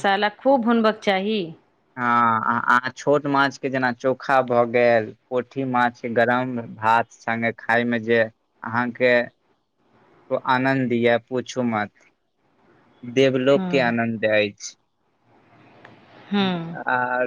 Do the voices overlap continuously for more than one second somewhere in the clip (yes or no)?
no